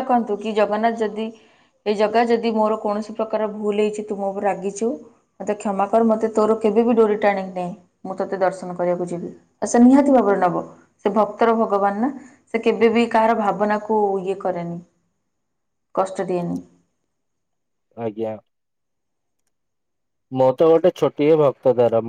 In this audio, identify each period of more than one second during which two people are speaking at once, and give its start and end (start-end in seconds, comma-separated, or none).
none